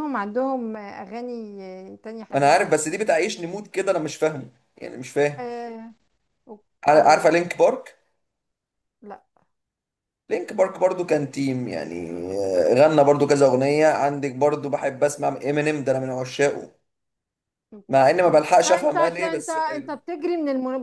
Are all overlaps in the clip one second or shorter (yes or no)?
no